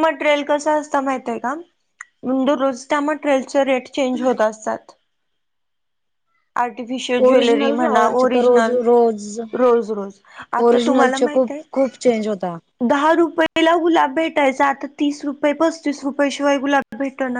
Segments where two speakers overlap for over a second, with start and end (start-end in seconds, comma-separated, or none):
7.3-8.8, 10.6-12.1